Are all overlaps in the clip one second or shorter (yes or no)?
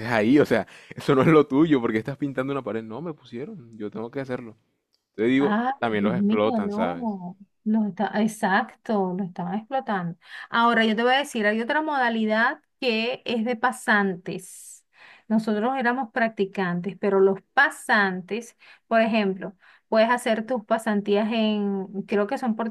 no